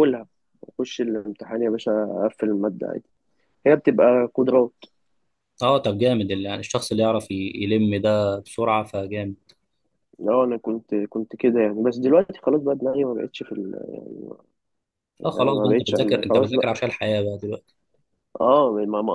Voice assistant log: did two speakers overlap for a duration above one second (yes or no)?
yes